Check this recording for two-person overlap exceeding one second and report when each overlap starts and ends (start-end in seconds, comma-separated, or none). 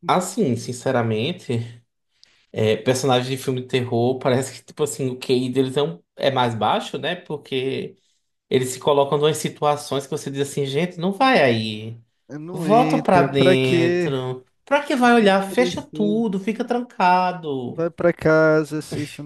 12.5-14.1, 15.0-16.4